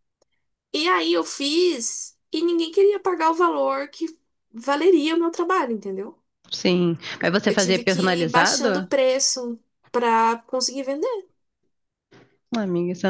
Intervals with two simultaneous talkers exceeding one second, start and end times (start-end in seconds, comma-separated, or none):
7.4-8.9